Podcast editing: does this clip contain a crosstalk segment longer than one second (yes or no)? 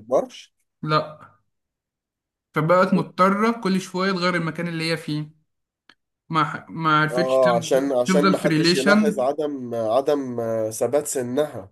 yes